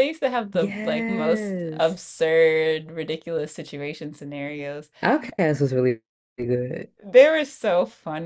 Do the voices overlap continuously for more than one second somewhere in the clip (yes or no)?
yes